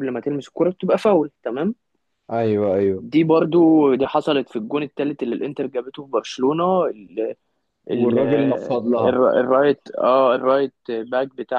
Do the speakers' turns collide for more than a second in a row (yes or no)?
yes